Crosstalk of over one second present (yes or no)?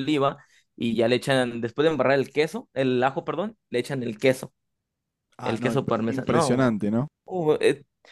yes